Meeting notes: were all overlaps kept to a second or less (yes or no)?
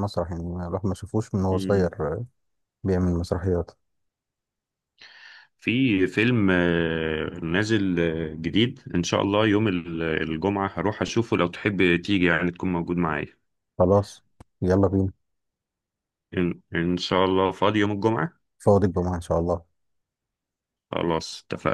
yes